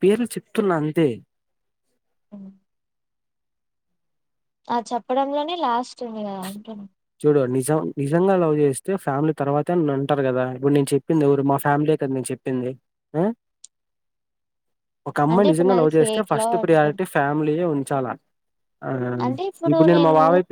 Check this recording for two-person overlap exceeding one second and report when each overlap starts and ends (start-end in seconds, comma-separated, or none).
15.3-17.0